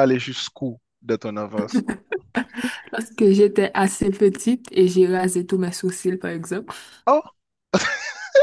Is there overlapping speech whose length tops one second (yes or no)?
no